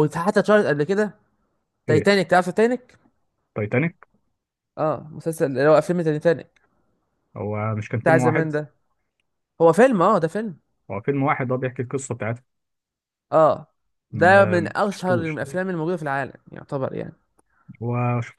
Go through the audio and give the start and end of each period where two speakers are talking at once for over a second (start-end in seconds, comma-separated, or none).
14.1-15.6